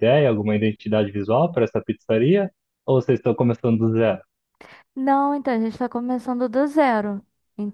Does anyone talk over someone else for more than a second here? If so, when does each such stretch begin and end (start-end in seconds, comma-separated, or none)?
none